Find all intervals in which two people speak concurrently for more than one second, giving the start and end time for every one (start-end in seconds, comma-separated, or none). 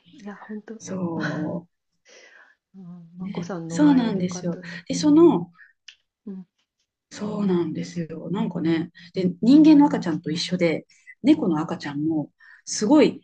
3.2-4.8